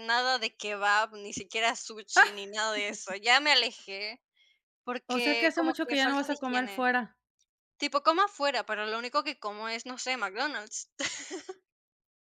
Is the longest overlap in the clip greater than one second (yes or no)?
yes